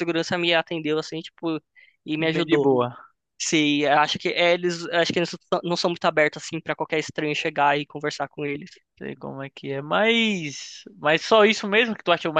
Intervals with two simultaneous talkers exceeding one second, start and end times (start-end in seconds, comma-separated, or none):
none